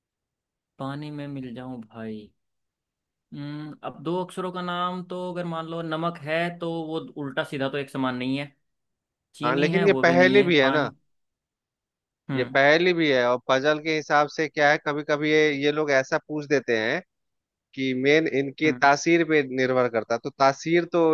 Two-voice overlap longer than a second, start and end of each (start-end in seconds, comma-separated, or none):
9.4-10.9